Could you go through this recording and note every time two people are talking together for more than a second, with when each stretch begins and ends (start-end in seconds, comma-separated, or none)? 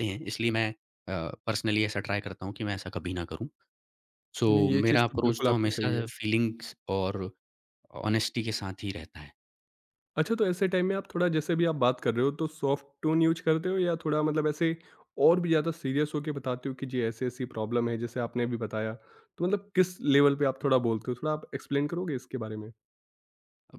4.5-6.0